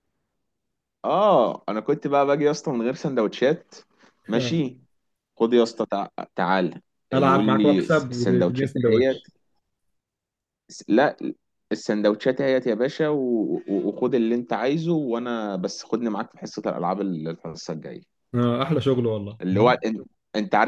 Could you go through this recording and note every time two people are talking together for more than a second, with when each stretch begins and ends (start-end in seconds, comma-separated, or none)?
7.1-9.3